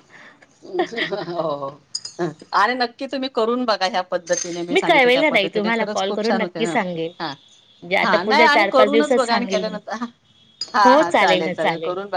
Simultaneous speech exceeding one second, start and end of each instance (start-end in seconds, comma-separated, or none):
4.9-6.8, 8.0-9.8